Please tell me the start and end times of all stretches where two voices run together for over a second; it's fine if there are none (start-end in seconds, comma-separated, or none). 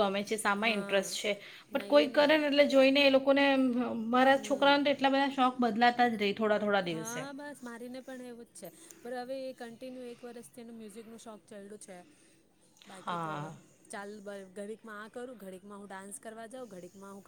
none